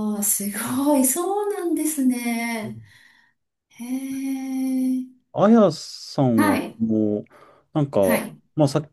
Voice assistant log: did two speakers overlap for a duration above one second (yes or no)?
no